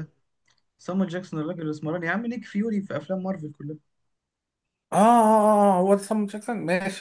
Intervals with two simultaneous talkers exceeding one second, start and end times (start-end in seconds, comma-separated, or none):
none